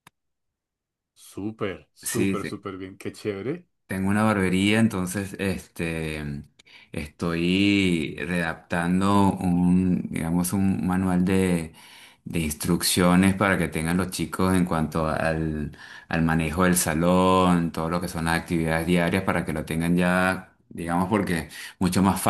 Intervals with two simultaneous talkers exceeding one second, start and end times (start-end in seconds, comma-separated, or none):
none